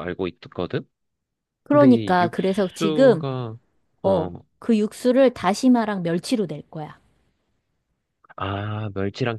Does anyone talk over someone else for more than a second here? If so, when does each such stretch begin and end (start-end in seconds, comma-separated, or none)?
1.7-3.2